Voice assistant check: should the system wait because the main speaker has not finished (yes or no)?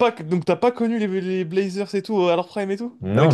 no